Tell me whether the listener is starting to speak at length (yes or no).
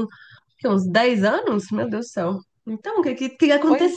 yes